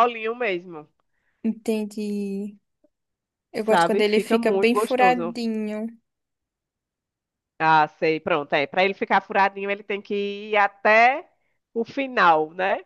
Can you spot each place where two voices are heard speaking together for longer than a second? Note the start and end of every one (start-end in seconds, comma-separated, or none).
3.6-5.4